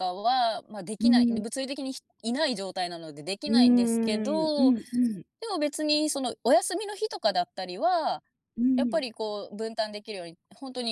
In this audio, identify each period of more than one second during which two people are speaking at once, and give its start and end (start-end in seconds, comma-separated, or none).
3.5-4.7